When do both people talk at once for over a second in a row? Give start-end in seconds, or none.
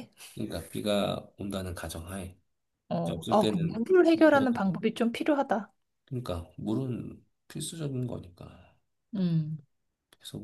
3.0-4.6